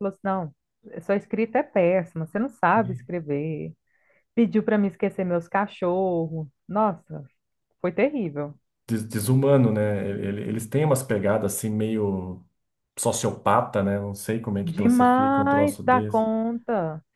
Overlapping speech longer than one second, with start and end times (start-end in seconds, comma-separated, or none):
14.6-16.3